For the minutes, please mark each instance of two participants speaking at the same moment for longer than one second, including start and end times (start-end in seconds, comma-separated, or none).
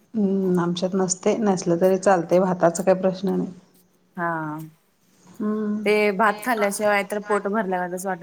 none